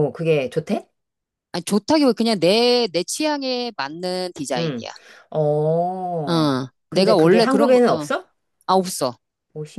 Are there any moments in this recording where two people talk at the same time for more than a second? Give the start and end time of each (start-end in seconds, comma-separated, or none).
6.2-8.1